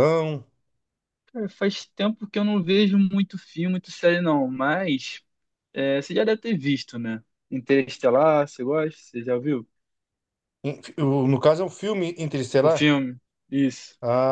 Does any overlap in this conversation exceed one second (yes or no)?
no